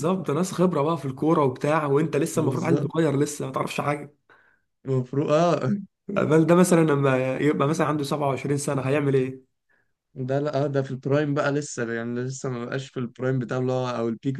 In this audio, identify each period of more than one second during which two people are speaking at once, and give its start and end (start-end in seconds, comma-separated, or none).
none